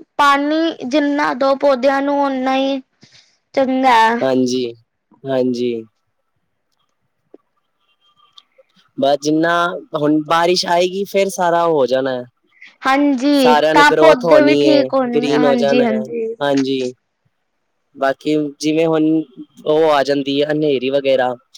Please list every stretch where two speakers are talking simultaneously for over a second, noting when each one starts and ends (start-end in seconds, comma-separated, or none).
13.4-16.0